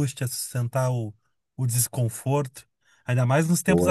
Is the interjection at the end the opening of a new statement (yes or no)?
no